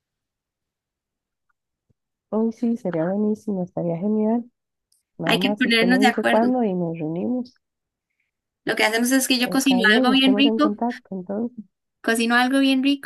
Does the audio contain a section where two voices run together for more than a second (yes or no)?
yes